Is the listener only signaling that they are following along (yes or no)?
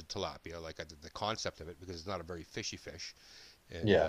yes